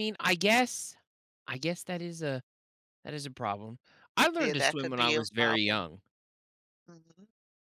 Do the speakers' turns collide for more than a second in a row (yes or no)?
yes